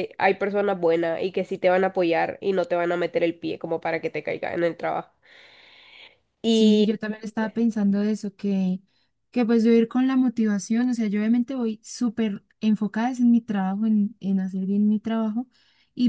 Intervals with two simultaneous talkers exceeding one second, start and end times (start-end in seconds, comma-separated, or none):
none